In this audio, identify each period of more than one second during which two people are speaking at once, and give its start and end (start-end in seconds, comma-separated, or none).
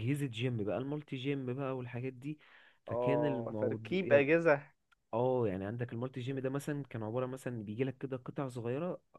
2.9-4.3